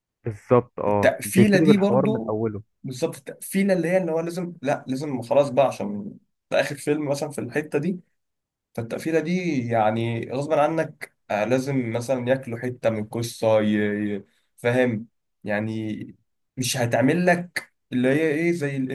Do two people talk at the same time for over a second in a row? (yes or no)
yes